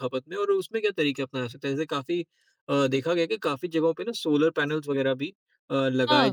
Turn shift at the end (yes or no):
no